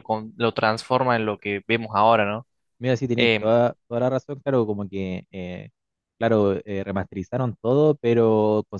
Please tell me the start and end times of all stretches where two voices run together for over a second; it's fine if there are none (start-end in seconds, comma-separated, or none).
none